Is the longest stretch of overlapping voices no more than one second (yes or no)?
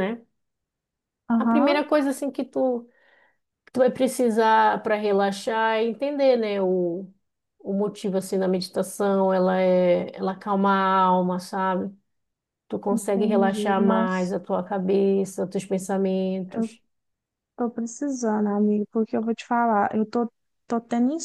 no